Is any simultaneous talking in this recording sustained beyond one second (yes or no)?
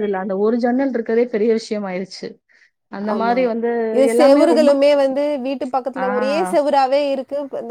no